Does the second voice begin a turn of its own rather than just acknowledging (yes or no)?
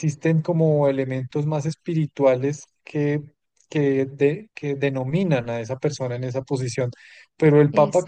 no